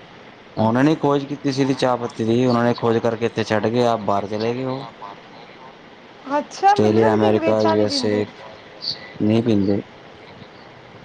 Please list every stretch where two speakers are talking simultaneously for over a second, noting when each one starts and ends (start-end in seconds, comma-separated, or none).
6.7-8.2